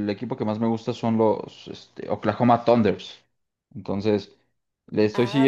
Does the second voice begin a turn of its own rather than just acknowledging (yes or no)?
yes